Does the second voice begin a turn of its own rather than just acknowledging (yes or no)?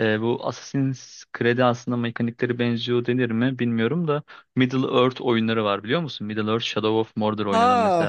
yes